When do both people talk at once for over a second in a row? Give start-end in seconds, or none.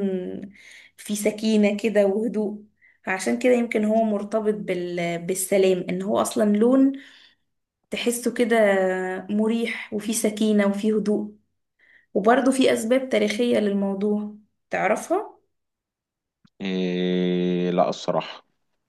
none